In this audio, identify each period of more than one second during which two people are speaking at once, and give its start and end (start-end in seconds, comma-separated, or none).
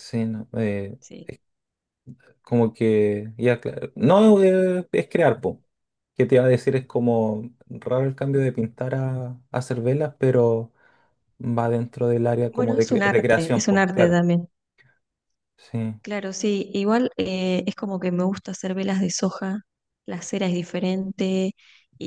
12.5-14.2